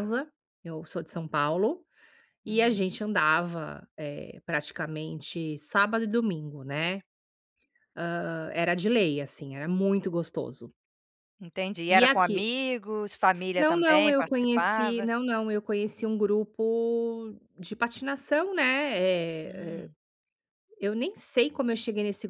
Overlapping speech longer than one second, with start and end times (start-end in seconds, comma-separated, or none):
13.6-15.1